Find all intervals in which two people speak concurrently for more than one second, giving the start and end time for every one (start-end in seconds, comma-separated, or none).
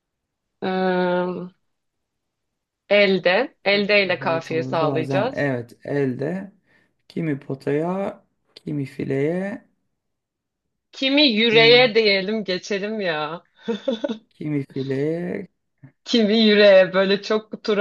4.2-5.5